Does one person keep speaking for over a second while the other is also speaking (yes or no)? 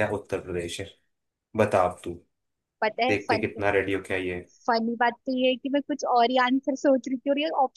no